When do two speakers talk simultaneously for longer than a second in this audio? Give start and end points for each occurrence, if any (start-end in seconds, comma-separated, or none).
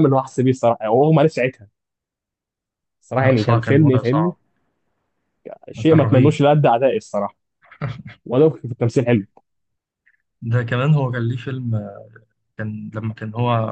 3.1-4.3